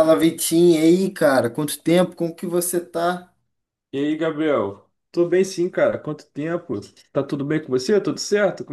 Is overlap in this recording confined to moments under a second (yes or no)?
yes